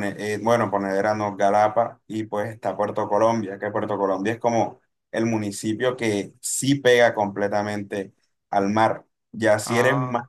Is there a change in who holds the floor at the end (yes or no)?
no